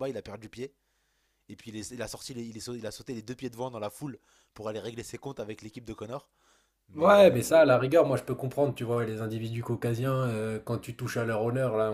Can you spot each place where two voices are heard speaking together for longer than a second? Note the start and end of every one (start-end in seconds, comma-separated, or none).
none